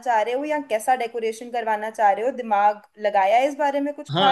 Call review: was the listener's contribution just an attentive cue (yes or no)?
no